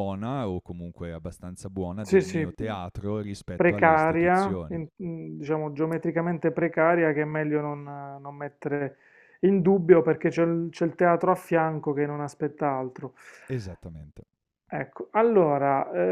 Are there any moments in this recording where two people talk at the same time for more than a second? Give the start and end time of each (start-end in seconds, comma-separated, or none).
3.5-4.8